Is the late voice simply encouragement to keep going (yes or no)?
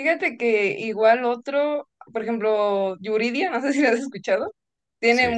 yes